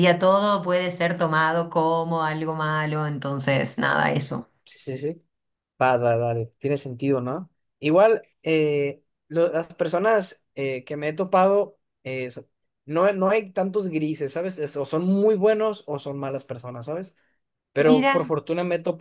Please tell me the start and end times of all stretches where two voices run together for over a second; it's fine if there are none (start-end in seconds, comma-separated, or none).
none